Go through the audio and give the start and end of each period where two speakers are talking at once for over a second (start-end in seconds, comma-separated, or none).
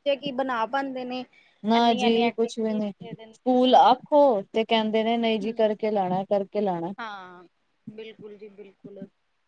1.8-3.7